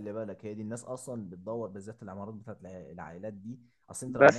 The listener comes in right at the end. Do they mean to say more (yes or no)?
no